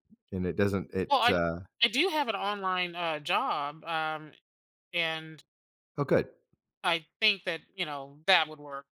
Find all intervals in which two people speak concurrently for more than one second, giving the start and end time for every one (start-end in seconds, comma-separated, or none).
none